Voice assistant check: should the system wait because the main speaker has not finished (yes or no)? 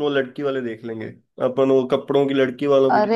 no